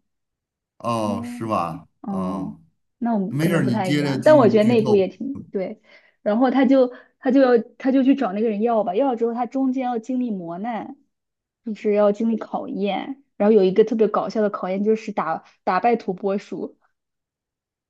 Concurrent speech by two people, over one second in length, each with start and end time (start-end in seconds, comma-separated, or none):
3.3-5.0